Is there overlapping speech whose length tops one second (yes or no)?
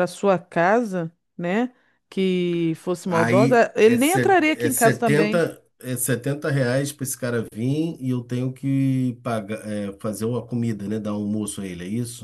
yes